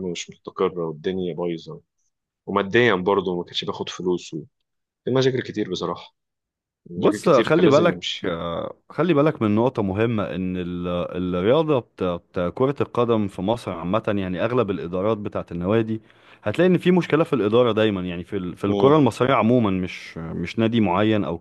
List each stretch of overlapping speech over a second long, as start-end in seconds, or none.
7.0-8.3